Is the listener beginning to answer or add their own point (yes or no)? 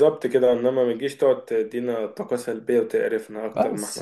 yes